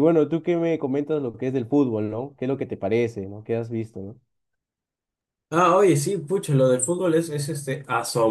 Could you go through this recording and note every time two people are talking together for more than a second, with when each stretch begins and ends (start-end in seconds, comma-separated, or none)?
none